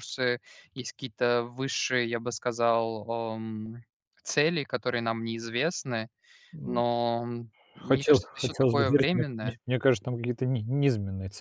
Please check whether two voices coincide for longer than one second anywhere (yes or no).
yes